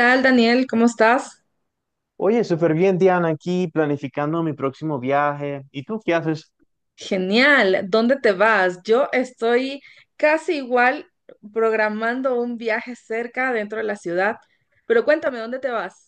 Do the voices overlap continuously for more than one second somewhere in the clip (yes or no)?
no